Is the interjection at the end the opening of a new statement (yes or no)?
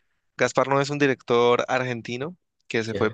no